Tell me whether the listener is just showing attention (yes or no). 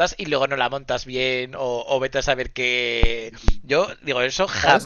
yes